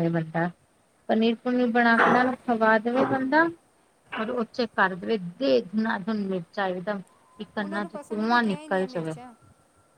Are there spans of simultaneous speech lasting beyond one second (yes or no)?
yes